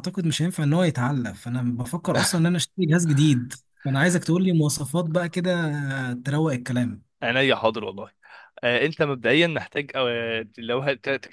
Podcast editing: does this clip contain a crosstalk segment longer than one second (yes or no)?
no